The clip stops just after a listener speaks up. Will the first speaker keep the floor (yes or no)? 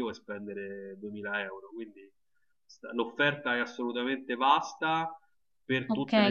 no